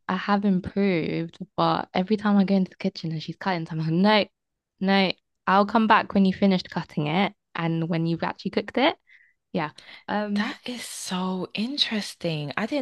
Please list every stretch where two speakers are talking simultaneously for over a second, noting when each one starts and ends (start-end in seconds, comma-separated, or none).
none